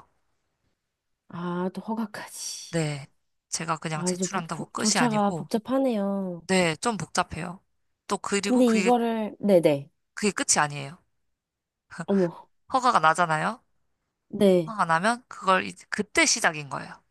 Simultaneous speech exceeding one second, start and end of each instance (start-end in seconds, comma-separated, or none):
3.9-5.5